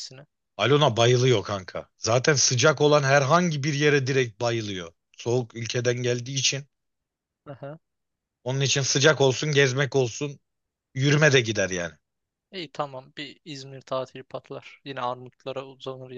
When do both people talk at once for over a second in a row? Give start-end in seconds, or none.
none